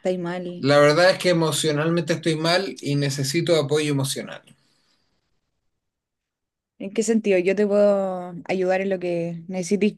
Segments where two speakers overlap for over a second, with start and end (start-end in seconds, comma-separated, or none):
none